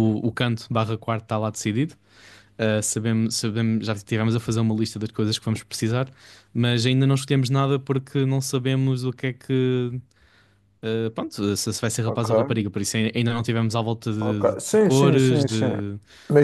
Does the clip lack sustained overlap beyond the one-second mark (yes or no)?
no